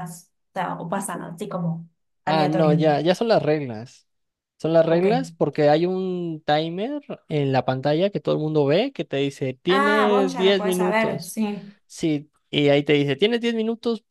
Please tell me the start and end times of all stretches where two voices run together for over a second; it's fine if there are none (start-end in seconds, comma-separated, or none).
9.7-11.4